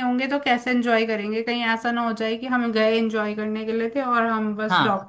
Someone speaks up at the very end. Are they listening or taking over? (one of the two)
taking over